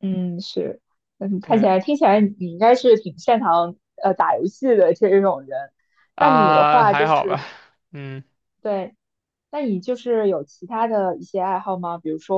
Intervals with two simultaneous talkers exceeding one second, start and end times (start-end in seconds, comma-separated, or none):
6.2-7.4